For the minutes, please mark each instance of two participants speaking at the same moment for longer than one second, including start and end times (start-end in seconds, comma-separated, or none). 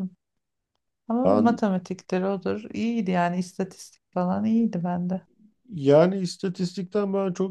none